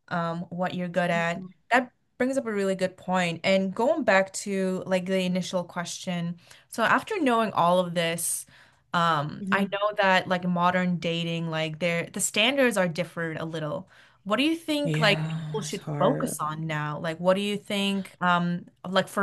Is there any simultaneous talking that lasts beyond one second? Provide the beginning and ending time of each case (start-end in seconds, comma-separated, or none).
14.8-16.4